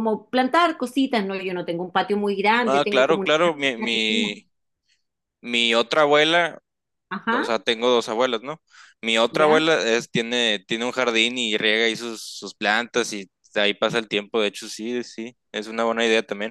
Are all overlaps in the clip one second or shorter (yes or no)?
no